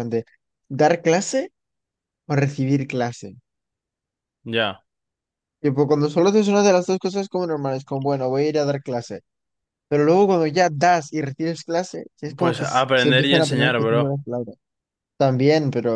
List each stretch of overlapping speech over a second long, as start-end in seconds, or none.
12.4-14.2